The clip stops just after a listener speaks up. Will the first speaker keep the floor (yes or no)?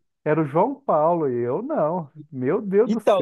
no